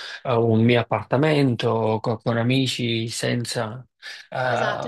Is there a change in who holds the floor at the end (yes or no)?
yes